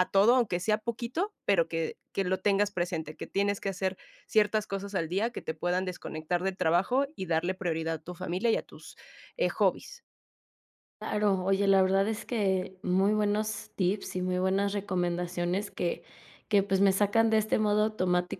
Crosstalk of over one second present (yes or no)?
no